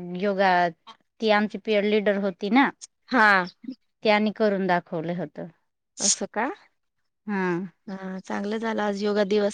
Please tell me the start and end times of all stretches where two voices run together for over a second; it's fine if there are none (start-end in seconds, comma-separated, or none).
none